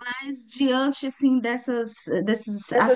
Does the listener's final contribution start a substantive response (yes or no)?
no